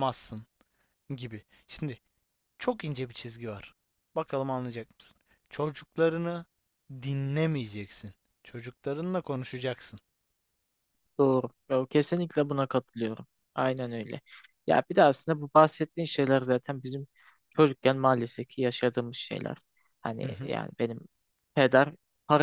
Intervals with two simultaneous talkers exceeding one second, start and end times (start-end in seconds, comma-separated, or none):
none